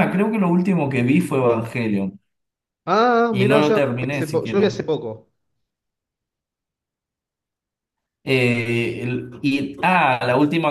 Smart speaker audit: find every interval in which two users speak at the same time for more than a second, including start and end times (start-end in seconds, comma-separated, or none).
3.3-4.8